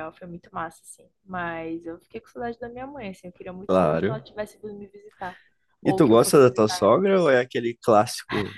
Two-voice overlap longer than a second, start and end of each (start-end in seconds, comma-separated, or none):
5.8-7.1